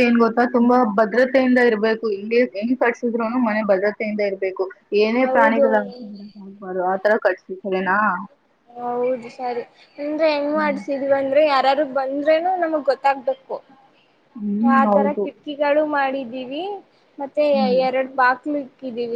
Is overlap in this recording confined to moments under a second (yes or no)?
yes